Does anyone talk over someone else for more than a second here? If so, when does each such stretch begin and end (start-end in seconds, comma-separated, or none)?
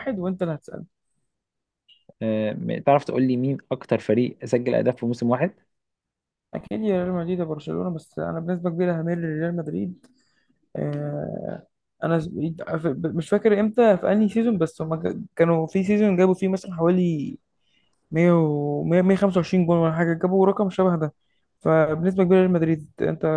none